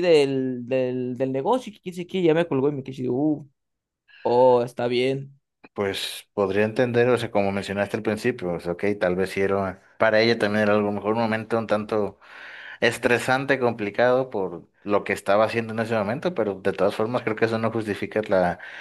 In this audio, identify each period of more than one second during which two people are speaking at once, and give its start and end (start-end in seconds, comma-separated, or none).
none